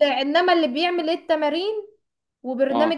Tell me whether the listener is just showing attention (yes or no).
yes